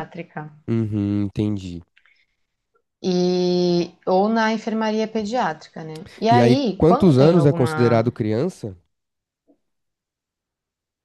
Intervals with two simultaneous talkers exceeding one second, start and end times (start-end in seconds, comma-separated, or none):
6.3-8.1